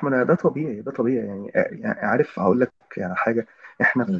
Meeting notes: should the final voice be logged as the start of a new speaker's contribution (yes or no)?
no